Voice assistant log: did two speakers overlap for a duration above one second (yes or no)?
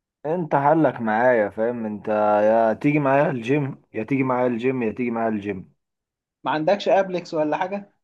no